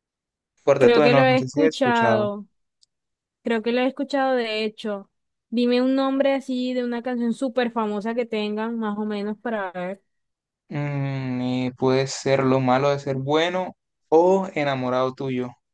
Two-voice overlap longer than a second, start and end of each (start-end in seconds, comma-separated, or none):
0.8-2.3